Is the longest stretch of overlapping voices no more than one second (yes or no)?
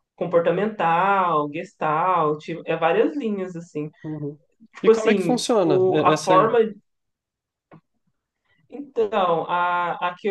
no